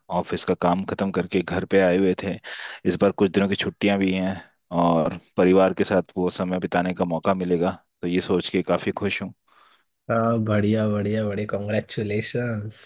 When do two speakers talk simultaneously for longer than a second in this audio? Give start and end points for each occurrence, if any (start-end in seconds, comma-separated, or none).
none